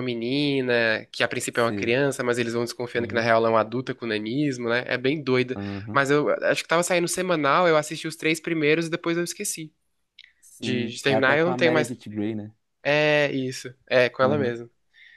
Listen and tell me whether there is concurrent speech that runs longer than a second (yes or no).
yes